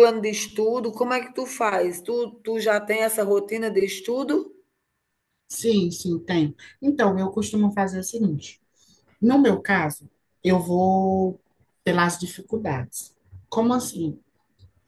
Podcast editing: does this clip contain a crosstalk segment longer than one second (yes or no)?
no